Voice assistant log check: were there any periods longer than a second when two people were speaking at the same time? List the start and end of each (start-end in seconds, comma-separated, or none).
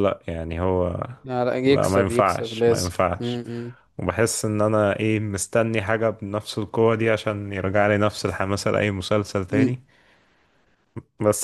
1.7-3.4